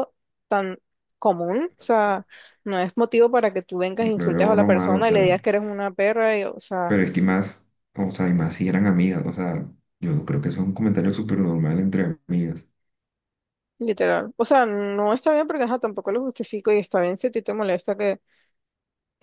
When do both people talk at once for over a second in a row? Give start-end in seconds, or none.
4.0-5.4